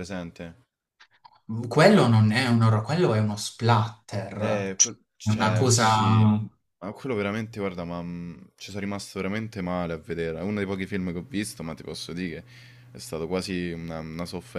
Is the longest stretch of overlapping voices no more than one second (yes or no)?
no